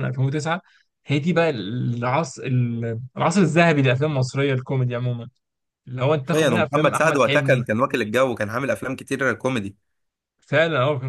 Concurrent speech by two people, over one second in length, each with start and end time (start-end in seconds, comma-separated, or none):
6.1-7.7